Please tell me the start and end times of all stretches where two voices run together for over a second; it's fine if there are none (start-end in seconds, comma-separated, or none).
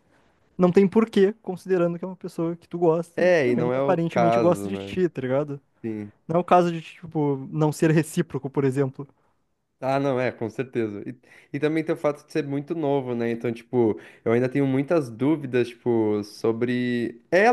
3.2-5.0